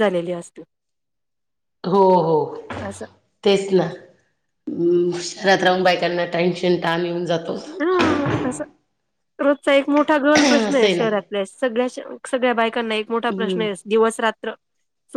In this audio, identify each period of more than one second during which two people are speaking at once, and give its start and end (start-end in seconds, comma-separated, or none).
none